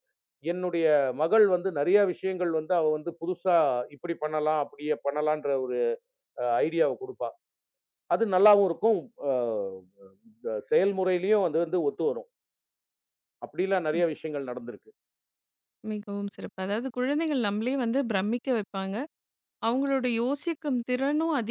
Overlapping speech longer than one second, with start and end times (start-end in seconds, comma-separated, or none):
none